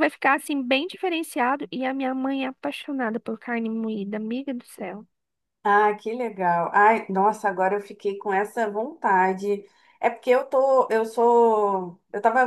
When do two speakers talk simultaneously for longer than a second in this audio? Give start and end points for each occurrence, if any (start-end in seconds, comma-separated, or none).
none